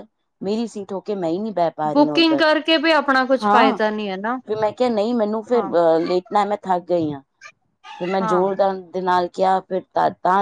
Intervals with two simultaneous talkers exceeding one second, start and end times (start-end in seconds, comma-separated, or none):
none